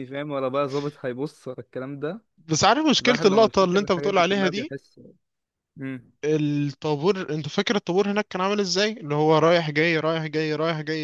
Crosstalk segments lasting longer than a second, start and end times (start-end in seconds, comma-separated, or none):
3.0-4.7